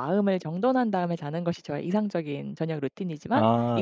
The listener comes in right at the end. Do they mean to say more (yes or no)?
no